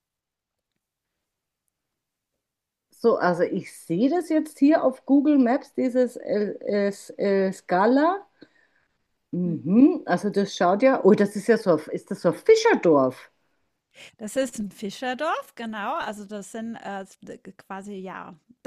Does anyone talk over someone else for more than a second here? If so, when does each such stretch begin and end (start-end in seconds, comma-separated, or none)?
none